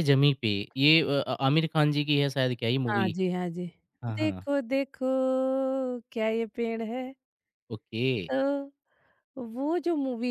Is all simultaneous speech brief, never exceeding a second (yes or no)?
yes